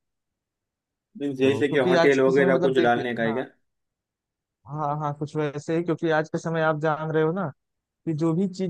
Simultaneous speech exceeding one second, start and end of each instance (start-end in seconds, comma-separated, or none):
1.4-3.4